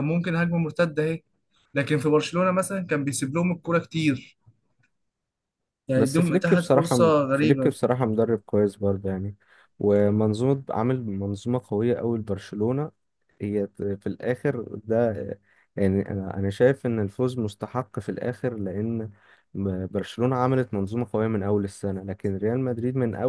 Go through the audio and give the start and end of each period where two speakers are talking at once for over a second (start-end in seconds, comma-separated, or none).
6.0-7.7